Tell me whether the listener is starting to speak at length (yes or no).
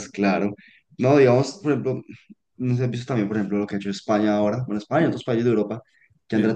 no